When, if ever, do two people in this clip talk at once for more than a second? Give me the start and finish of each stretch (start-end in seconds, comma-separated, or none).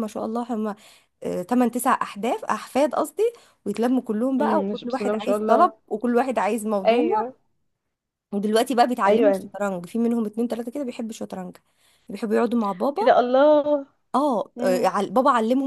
4.4-5.7